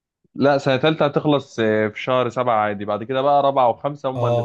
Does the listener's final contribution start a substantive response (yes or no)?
yes